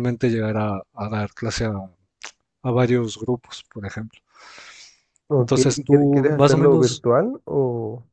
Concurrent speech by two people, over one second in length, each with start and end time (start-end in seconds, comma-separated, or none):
5.4-7.0